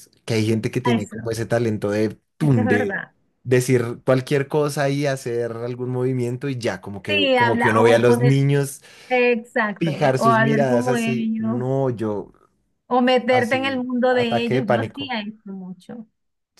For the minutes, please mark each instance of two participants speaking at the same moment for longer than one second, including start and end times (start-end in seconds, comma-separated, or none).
7.1-8.4, 9.8-11.7, 13.3-15.1